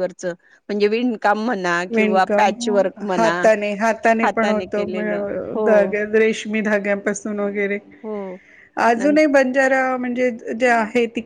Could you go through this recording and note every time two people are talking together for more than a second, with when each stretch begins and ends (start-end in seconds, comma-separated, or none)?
none